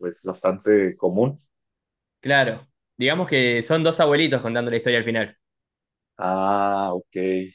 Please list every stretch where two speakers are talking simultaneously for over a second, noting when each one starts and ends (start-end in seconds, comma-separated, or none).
none